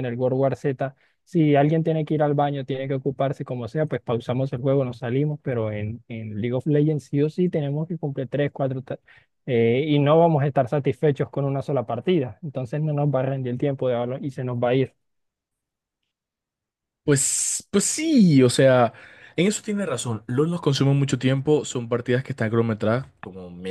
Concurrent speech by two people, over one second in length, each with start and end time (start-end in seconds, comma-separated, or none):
none